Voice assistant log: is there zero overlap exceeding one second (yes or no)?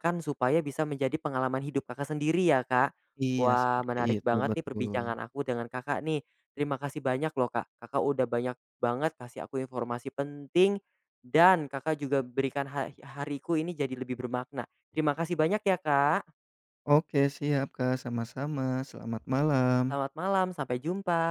no